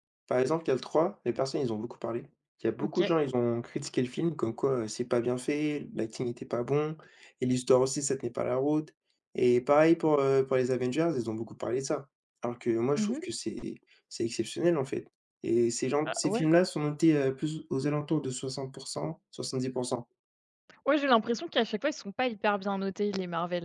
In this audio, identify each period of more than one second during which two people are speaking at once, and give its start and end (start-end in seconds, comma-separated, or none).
none